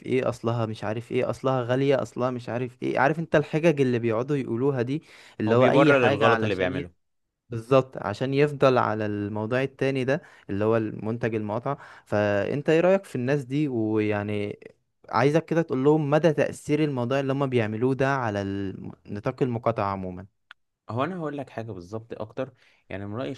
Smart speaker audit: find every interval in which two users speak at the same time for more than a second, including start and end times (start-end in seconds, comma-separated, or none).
5.5-6.9